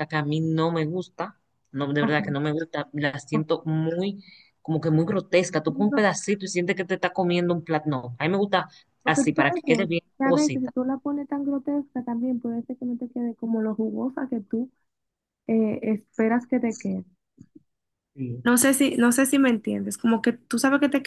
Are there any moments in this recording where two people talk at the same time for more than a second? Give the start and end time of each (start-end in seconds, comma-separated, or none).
9.0-10.7